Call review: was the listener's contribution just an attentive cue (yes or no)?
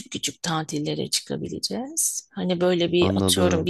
yes